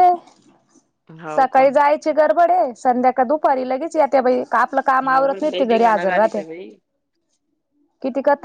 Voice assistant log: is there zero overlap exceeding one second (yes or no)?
no